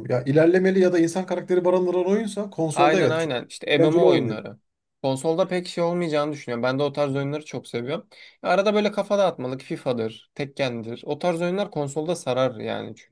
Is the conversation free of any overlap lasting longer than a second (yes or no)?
no